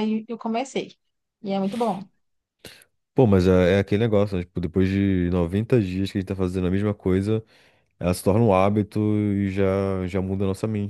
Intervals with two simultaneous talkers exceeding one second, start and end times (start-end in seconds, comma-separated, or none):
none